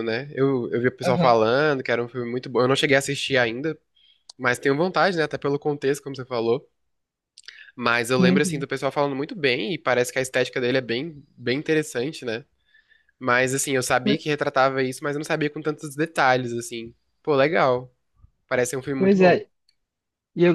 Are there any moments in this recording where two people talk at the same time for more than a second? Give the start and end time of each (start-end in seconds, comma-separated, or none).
none